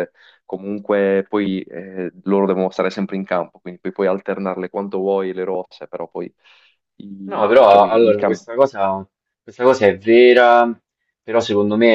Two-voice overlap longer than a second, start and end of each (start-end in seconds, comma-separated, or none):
7.2-8.4